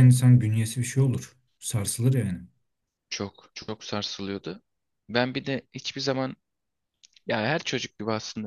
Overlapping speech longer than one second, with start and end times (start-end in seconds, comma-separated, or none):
none